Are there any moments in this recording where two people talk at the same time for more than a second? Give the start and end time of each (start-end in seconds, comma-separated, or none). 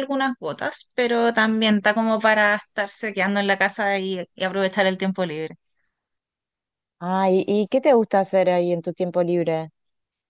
none